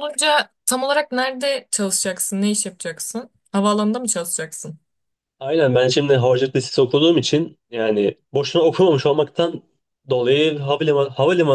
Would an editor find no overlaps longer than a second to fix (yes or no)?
yes